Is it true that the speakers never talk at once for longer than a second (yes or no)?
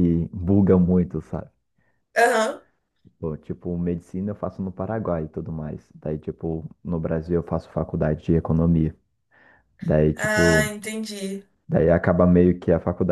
yes